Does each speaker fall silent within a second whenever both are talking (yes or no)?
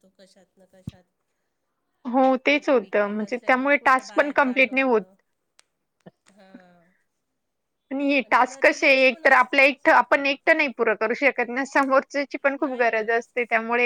no